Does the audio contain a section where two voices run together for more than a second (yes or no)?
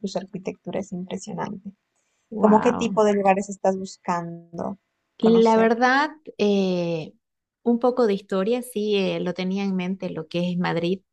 no